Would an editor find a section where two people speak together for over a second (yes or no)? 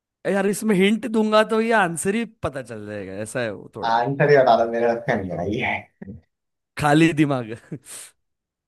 no